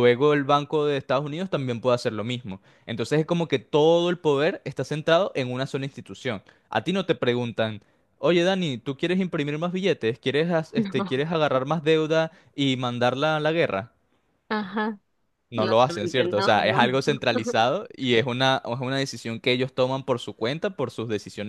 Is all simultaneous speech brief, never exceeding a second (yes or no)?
no